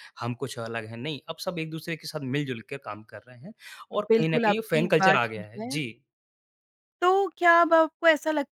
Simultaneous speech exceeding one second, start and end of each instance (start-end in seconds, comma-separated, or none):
4.1-5.8